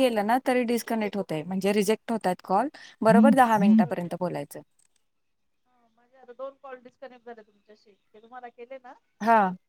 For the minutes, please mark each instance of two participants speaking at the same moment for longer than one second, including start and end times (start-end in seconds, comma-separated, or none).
none